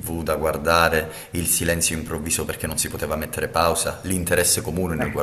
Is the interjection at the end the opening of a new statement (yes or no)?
no